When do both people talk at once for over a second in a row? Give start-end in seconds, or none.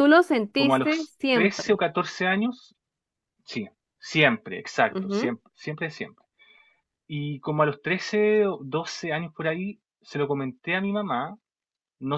0.5-1.8